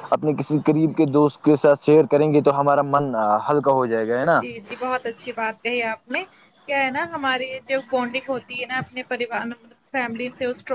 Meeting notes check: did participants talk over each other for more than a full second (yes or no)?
no